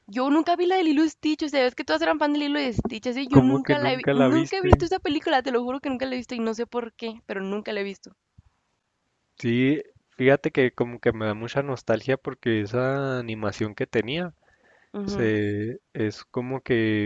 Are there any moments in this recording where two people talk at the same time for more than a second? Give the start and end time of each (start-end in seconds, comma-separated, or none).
3.3-4.8